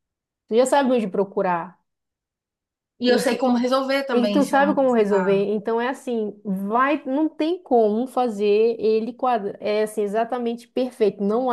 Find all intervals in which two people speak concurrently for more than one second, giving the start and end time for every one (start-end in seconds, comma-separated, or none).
4.1-5.4